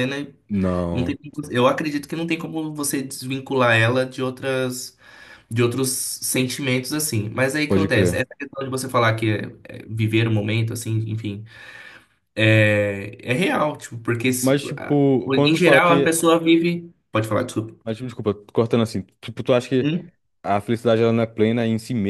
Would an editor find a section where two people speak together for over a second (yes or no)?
yes